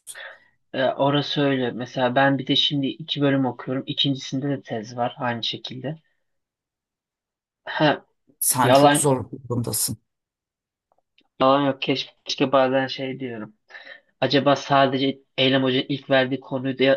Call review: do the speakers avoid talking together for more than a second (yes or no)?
yes